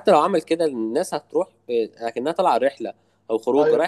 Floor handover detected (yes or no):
no